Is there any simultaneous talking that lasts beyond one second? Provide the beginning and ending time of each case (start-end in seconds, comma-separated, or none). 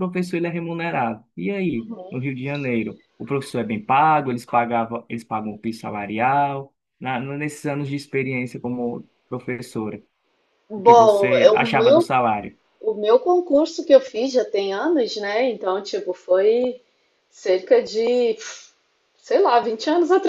10.8-12.1